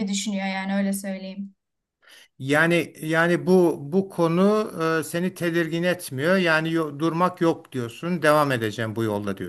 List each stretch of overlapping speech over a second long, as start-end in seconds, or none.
none